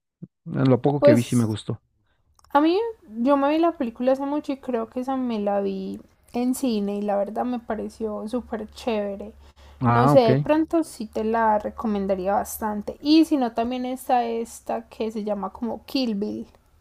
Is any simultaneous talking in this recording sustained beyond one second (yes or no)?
no